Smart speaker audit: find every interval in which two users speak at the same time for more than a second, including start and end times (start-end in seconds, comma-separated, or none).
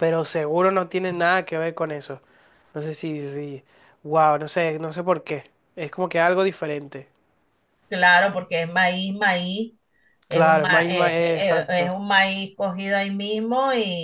10.3-11.9